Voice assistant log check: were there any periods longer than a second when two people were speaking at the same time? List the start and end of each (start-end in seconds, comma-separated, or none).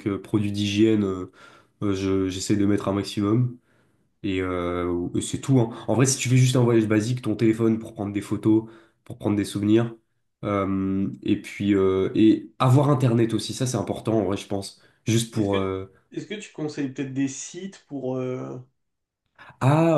none